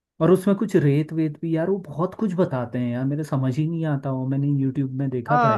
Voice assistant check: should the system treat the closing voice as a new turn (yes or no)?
yes